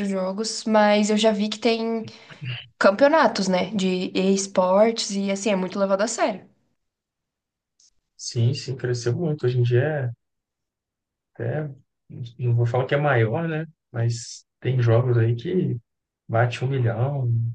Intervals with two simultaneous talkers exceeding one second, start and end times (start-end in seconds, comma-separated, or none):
none